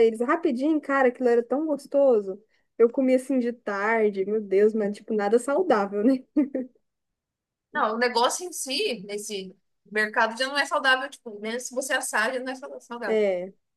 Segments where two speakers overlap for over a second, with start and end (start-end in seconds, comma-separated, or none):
none